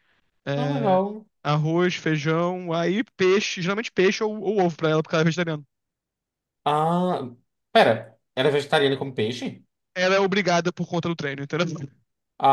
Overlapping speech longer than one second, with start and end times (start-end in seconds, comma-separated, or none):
none